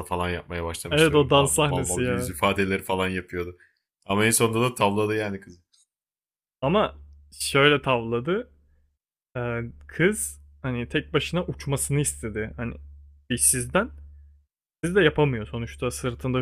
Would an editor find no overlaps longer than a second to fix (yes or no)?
no